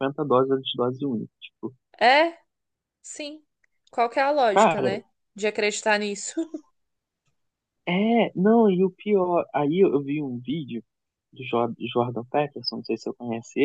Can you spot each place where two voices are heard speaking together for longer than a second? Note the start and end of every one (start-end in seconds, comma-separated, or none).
none